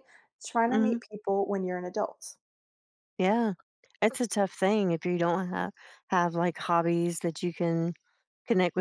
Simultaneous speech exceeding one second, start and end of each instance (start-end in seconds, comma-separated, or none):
none